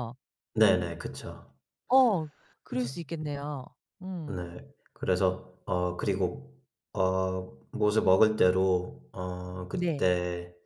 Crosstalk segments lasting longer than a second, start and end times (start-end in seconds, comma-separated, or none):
none